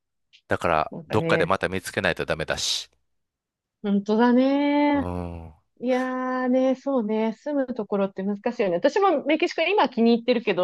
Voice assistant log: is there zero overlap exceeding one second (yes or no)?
yes